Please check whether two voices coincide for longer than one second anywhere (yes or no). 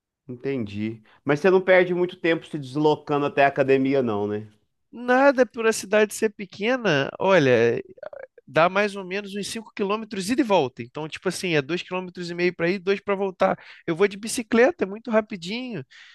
no